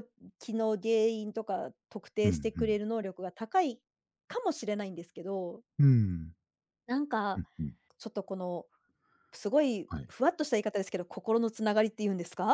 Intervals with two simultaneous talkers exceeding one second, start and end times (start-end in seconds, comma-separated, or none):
none